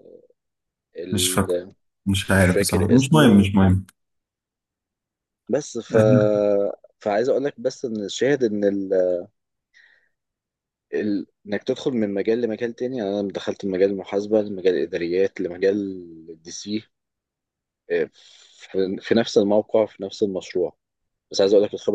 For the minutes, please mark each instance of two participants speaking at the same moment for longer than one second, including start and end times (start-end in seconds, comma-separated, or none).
2.3-3.5